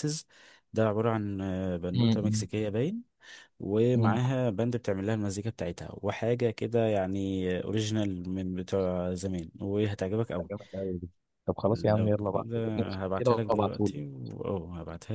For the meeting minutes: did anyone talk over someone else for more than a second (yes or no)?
yes